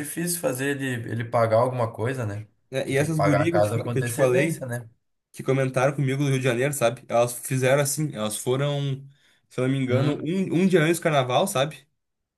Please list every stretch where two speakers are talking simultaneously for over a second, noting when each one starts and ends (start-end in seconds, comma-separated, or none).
2.8-4.7